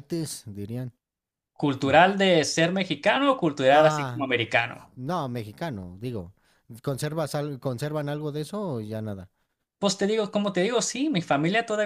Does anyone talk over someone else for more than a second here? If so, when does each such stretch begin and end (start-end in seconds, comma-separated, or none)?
none